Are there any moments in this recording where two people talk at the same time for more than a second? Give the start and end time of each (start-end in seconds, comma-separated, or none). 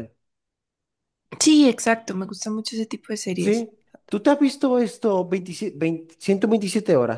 none